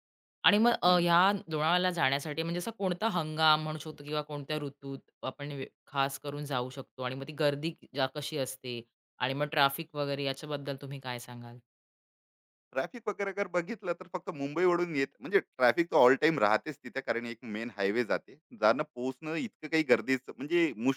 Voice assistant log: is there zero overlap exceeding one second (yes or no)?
yes